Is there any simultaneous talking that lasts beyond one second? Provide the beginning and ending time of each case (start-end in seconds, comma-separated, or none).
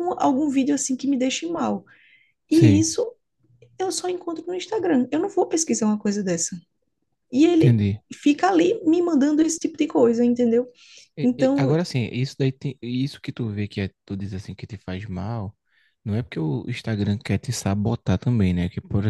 none